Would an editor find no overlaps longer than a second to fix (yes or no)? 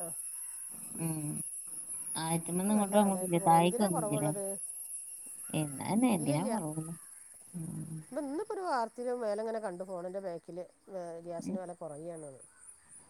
no